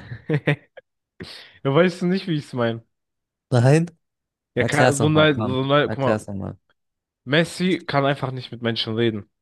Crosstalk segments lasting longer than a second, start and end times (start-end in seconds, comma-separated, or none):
4.5-6.3